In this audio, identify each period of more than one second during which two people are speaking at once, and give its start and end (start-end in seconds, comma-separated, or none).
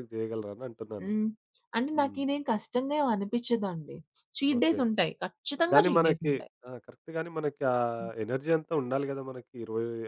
none